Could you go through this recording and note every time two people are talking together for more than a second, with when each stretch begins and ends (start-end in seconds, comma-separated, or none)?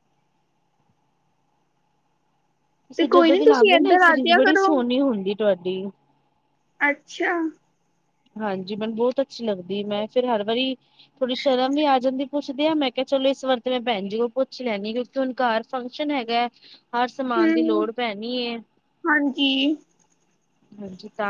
3.0-4.8